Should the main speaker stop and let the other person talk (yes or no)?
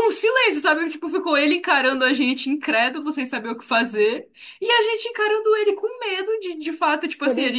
no